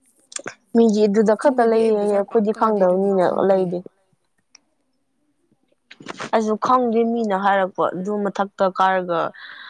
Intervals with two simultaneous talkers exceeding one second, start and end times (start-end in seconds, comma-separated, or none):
1.2-3.6